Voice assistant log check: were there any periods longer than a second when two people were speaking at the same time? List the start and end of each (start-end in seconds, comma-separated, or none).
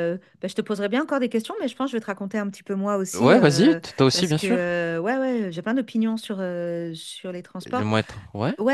3.2-4.8